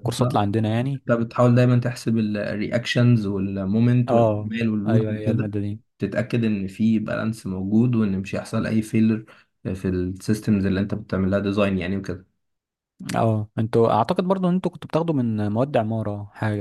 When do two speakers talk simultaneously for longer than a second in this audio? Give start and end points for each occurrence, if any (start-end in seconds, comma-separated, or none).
4.1-5.6